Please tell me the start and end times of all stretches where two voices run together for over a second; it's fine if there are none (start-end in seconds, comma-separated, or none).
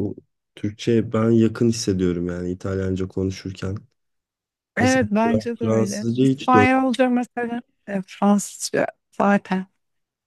4.8-6.5